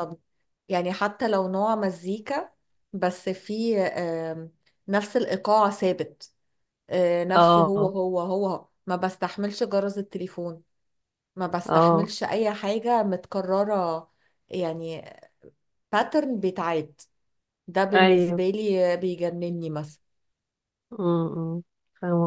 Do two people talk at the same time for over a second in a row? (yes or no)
no